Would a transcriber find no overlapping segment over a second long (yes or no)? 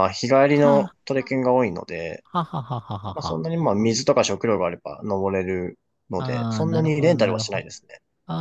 no